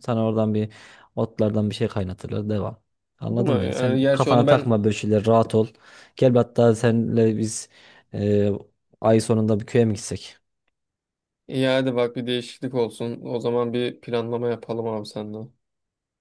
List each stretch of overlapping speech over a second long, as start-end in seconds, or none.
3.3-4.8